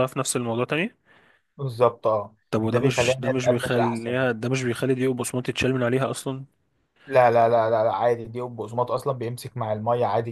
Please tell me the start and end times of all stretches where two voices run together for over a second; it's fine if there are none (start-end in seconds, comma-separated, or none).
2.5-4.2